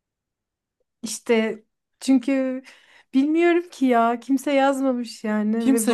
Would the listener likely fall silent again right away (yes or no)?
no